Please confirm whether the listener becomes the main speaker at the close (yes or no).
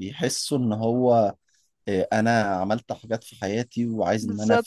no